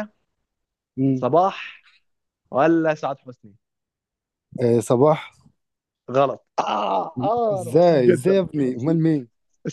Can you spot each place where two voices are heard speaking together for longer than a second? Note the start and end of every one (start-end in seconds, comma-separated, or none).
7.5-9.0